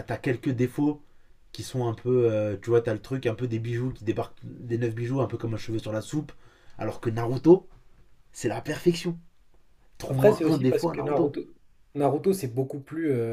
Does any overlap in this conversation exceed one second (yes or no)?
yes